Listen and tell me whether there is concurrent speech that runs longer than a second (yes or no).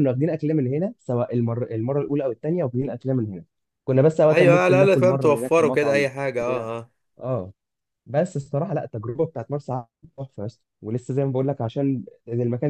yes